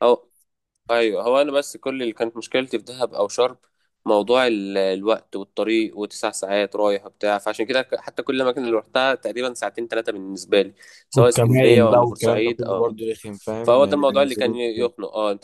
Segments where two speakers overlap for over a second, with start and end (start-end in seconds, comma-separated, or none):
11.2-13.0, 13.6-14.9